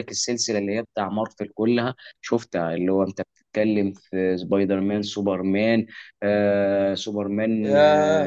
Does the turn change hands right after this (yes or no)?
yes